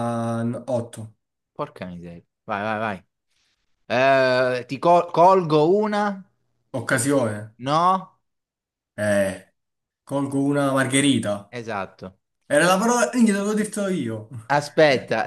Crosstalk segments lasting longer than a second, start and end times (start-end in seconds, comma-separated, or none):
none